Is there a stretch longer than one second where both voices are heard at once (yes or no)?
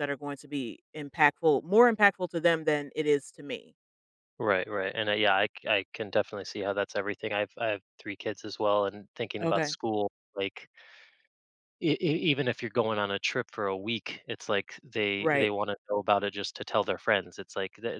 no